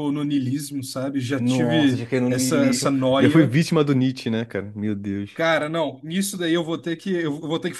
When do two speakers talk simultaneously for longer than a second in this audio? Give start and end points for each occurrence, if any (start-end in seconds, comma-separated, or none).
1.4-3.5